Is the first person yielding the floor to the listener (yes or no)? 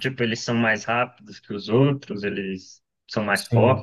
yes